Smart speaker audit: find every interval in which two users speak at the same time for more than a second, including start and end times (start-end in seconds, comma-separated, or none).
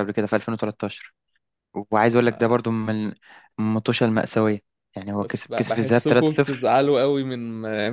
5.2-6.7